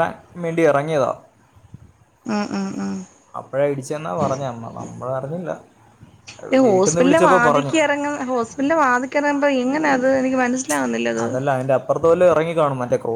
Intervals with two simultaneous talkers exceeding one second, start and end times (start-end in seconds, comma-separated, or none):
none